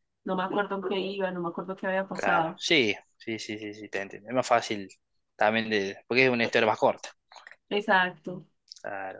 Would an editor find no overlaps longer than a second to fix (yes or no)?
yes